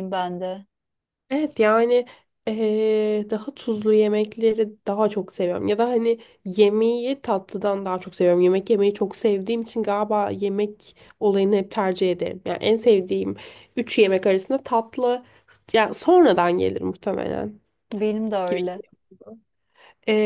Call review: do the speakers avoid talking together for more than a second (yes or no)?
yes